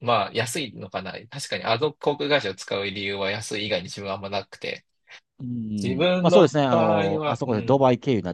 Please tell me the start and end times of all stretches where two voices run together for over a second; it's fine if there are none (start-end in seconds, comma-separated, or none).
5.8-7.8